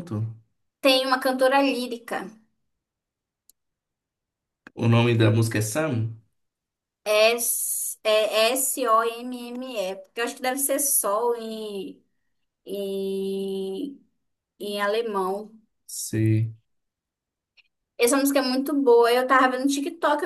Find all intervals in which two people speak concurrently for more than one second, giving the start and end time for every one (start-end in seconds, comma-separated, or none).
none